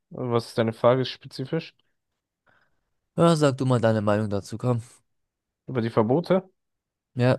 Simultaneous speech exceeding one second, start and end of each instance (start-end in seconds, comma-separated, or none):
none